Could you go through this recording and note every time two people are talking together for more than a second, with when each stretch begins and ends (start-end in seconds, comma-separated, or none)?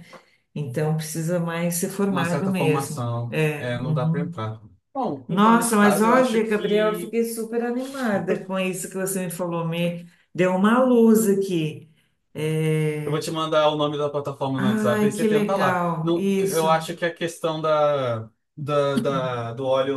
2.1-4.3, 5.3-7.2, 14.6-16.7